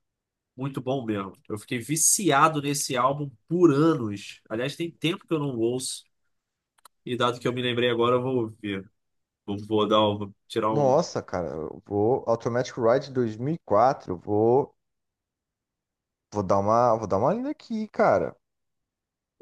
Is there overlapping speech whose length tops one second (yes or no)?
no